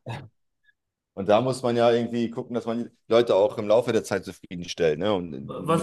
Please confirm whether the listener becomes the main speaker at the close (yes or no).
yes